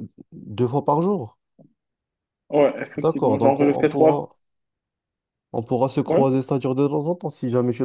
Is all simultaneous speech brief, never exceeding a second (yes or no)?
no